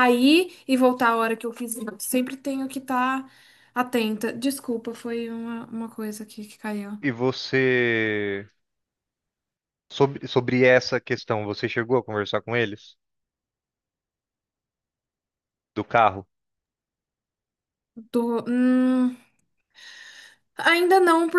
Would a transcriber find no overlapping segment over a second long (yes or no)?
yes